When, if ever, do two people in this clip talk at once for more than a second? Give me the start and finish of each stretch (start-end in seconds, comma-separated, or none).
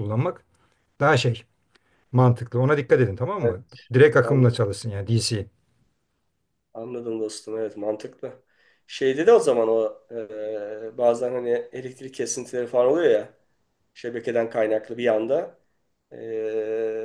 none